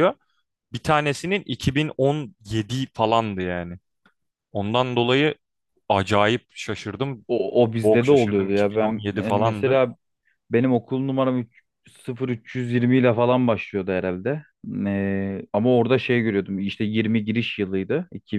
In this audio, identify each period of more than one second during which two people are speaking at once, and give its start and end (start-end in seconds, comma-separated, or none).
7.8-9.8